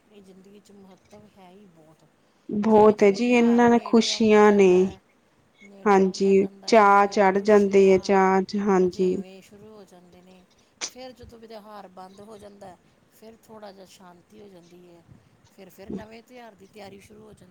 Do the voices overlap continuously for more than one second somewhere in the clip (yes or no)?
yes